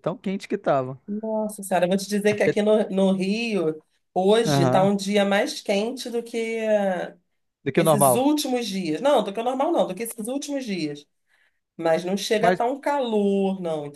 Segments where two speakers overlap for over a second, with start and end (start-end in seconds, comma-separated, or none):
none